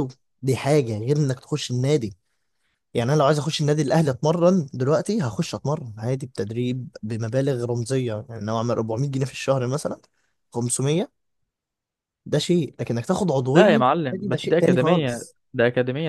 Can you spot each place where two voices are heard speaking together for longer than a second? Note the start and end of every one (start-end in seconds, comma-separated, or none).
13.5-15.3